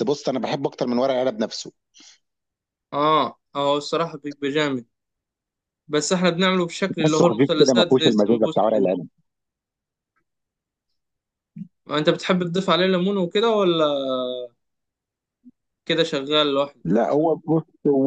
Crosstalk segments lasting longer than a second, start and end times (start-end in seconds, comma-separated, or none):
7.0-8.9